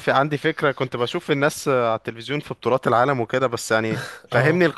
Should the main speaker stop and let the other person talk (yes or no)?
no